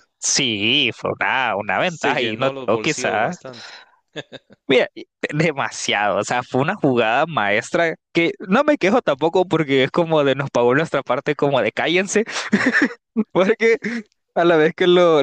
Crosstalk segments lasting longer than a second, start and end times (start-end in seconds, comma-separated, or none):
1.9-3.4